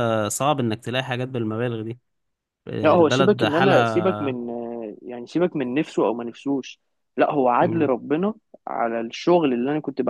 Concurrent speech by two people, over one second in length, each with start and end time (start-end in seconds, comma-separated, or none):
2.8-4.4